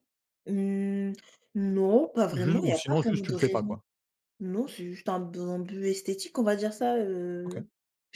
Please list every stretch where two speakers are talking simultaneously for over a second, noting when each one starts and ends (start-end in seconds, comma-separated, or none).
2.3-3.8